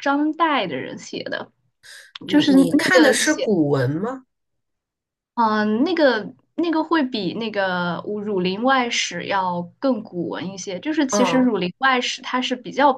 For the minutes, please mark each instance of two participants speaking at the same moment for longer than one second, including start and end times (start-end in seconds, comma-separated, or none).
2.3-3.5